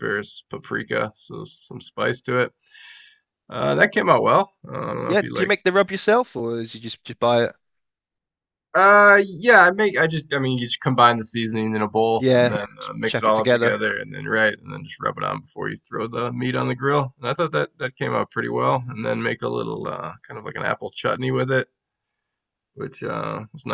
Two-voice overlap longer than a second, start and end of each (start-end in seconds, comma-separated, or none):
12.2-13.8